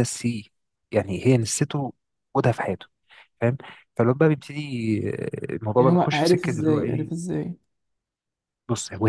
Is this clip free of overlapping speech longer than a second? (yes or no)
no